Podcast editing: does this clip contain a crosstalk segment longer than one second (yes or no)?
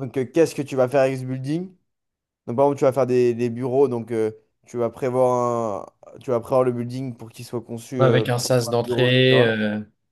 yes